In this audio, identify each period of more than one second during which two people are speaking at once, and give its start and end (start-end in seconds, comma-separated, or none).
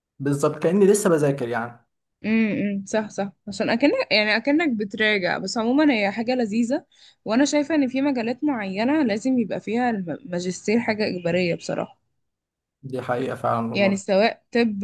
none